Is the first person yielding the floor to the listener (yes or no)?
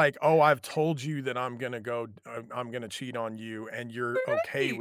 no